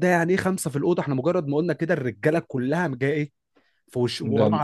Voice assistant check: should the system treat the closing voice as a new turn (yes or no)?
no